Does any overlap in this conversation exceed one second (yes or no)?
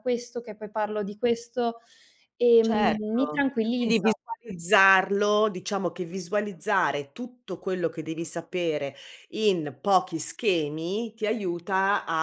yes